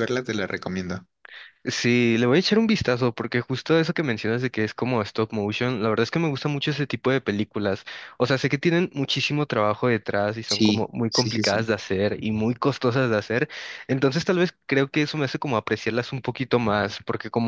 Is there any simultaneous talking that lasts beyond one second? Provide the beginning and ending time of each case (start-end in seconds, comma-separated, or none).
10.4-11.7